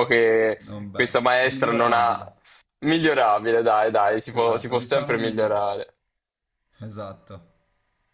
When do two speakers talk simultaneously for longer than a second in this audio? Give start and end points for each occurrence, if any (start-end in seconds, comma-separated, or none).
0.6-2.2, 4.3-5.7